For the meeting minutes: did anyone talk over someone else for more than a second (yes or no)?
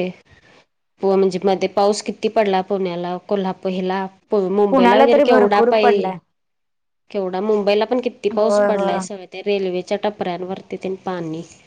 yes